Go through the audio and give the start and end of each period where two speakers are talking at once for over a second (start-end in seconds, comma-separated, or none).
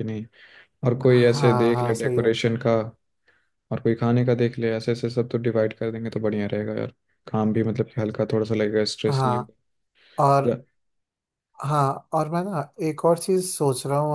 1.0-2.3